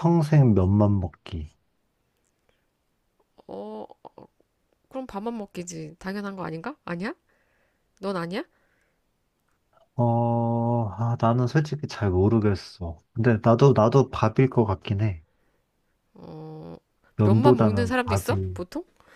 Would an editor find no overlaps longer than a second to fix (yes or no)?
no